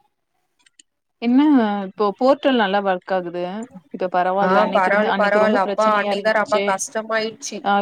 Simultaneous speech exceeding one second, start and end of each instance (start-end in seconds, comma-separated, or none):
4.5-6.7